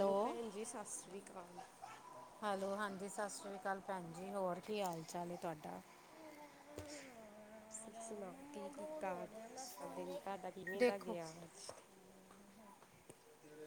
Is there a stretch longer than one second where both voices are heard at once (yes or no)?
yes